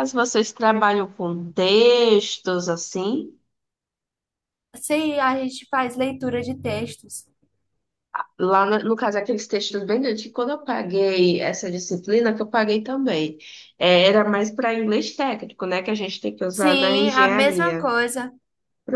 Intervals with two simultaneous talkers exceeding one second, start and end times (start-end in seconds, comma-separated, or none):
16.5-17.9